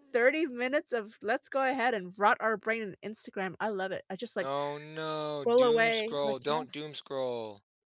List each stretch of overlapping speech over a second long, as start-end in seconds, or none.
5.2-6.8